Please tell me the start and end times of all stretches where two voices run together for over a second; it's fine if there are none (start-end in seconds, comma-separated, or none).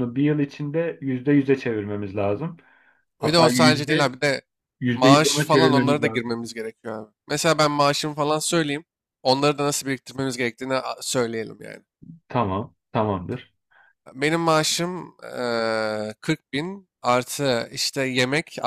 4.9-6.2